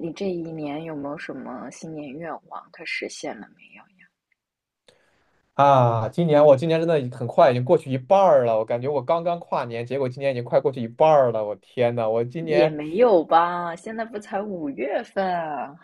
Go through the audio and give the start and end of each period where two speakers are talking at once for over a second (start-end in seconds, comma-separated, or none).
none